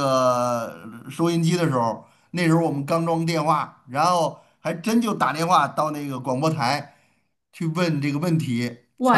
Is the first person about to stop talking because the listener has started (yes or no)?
yes